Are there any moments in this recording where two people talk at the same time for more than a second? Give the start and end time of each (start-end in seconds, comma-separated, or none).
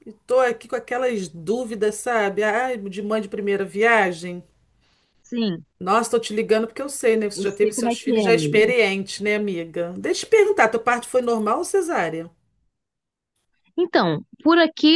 7.3-8.7